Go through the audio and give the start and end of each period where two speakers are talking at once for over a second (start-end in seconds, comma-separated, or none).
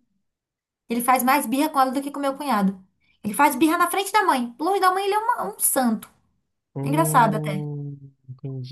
none